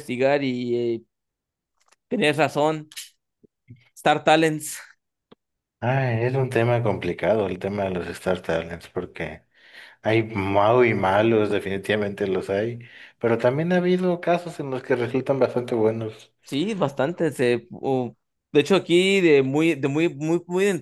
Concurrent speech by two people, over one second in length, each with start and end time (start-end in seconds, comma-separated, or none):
none